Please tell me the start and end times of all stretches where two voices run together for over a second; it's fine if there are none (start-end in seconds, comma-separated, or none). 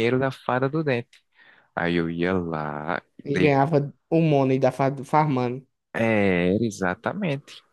none